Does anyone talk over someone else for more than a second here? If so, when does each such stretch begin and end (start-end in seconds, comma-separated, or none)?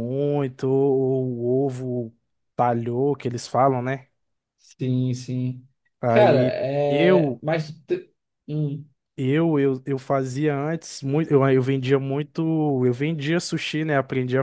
6.1-7.4